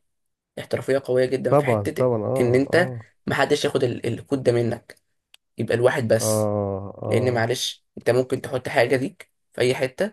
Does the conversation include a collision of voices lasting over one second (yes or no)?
yes